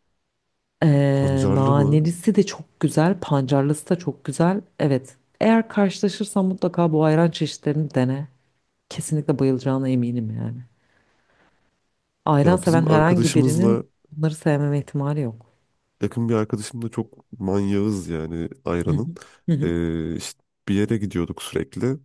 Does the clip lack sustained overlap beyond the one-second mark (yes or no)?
no